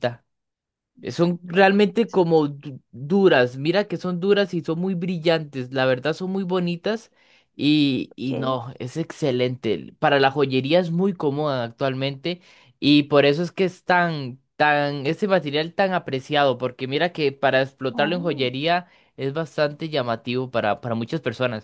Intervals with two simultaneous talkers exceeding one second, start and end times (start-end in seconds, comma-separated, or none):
1.1-2.5